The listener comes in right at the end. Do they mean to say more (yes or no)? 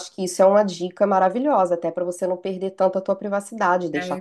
yes